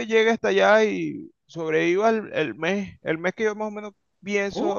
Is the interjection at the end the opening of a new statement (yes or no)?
yes